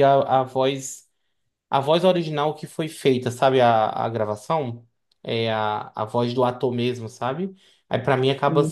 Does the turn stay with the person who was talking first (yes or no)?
yes